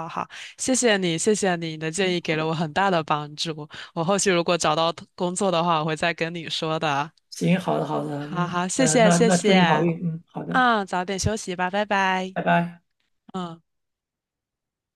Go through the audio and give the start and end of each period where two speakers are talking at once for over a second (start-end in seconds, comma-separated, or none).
8.2-9.9